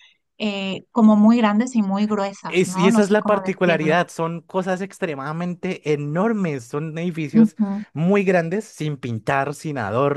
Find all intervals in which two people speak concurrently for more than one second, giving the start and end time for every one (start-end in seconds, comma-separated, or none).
2.5-3.9